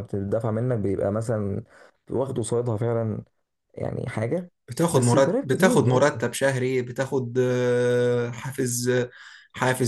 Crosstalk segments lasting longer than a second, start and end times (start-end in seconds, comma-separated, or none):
4.9-6.2